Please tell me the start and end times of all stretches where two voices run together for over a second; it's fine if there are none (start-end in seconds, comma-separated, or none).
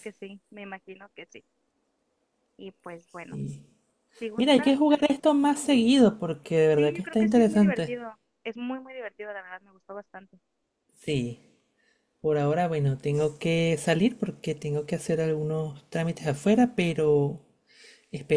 6.7-7.9